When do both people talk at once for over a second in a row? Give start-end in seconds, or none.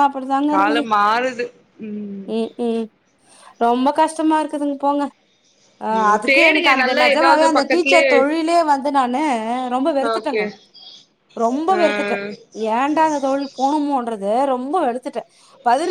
6.0-8.1